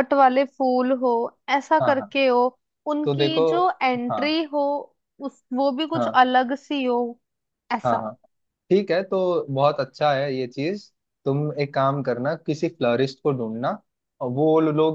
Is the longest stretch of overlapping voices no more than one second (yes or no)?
yes